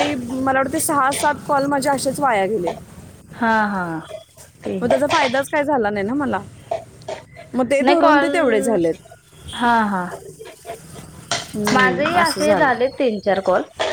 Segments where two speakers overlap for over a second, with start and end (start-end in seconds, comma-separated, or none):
11.7-13.0